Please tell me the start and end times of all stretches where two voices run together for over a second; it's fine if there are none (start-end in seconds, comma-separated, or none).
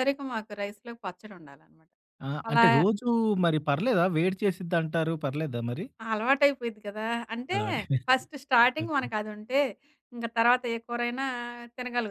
none